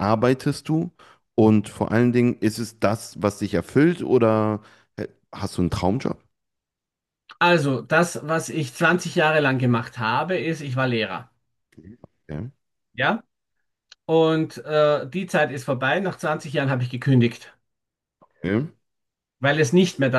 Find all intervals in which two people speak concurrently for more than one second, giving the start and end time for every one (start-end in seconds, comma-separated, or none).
none